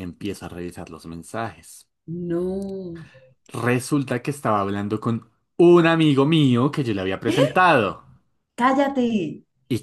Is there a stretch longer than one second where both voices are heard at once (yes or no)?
no